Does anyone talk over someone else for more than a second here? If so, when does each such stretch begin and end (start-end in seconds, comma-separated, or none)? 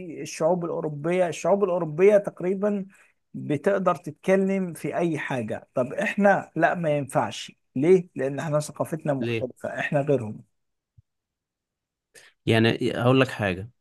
none